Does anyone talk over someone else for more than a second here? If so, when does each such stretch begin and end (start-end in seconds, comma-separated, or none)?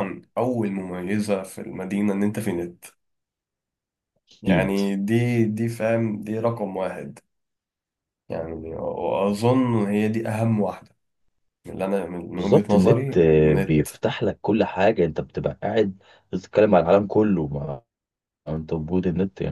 12.3-13.8